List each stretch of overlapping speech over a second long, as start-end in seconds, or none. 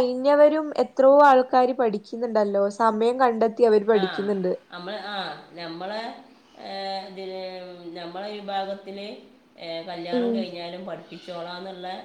none